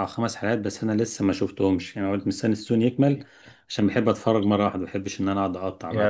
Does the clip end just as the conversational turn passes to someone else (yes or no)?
yes